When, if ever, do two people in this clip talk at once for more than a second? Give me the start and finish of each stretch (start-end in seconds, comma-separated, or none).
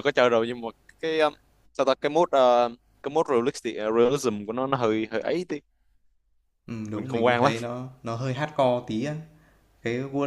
none